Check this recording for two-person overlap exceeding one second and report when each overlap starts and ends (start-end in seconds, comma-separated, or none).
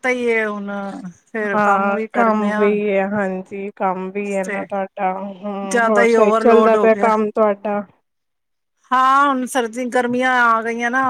5.7-7.1